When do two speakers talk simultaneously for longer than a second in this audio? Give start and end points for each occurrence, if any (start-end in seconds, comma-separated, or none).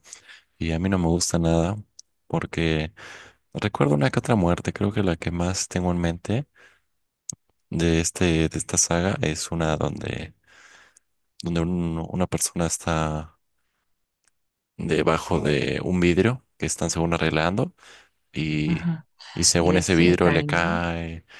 19.6-20.8